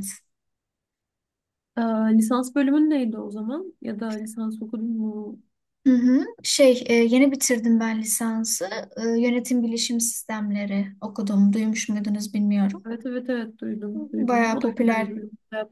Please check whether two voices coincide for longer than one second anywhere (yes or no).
yes